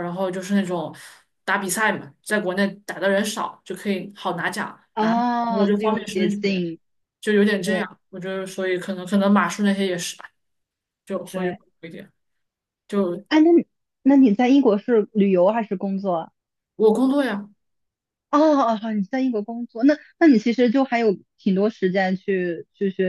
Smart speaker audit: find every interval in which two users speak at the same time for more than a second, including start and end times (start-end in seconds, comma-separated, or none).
4.9-6.6